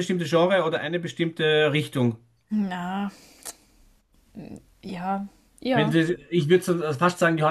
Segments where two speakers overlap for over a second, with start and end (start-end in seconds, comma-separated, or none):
none